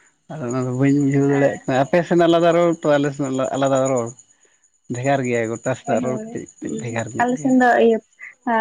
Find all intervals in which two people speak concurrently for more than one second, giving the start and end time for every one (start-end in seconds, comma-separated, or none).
5.9-7.5